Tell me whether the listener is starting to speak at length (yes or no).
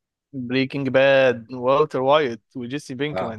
no